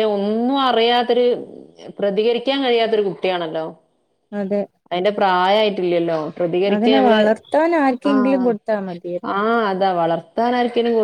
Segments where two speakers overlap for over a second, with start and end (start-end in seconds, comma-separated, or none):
none